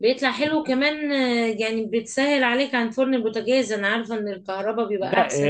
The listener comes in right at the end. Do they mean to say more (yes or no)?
yes